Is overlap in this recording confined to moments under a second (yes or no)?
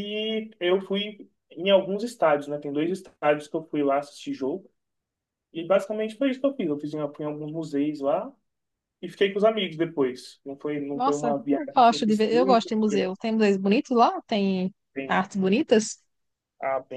no